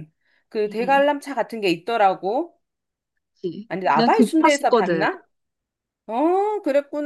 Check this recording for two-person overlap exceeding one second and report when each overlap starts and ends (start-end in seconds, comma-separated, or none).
3.7-5.1